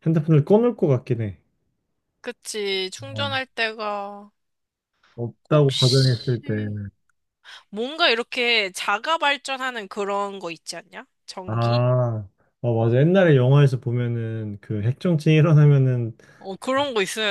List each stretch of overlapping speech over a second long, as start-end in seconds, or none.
5.5-6.7